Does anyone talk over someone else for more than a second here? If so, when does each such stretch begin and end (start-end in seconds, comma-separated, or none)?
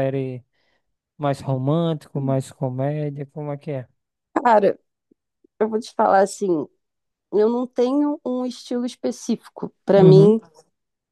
none